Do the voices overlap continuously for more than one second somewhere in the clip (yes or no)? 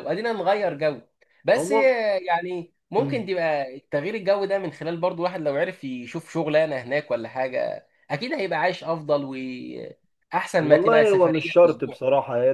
yes